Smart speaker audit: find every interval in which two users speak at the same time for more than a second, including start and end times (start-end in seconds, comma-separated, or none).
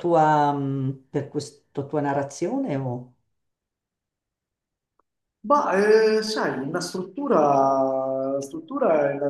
none